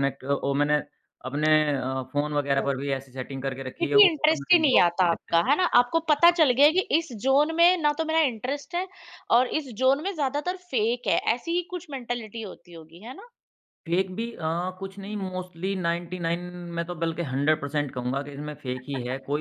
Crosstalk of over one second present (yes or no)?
yes